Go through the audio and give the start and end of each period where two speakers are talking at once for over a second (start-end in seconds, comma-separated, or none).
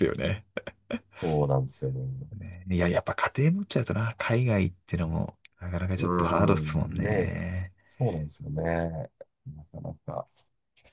6.0-7.4